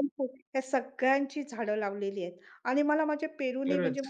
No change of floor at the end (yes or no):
yes